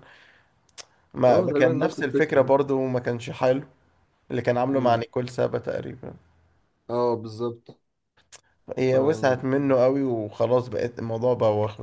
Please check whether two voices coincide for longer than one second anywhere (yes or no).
yes